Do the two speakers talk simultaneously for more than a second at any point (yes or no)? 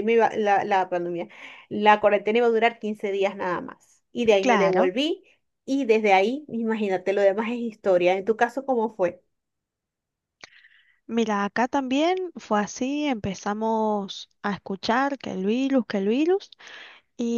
no